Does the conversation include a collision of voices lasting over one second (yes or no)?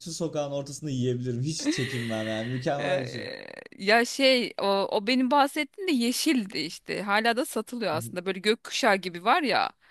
no